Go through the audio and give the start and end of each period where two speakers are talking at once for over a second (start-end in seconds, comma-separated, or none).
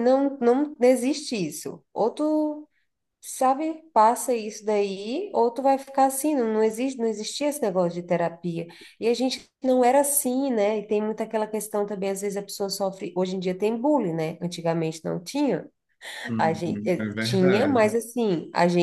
16.4-18.0